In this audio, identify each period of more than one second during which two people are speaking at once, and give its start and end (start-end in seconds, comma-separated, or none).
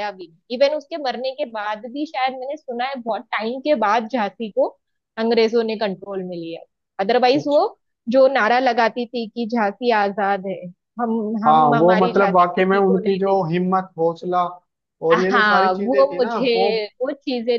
11.5-13.5, 15.1-16.7